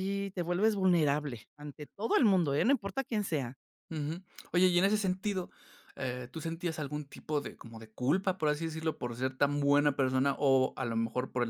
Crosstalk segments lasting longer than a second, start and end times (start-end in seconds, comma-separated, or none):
none